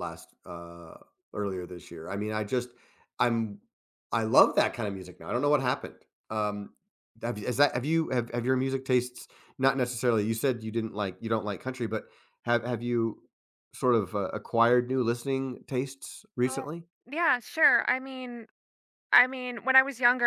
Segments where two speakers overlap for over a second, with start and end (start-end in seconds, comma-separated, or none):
none